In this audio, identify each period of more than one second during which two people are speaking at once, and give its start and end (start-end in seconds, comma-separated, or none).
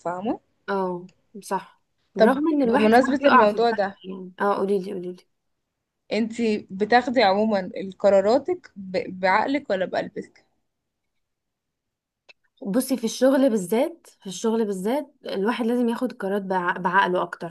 2.2-4.0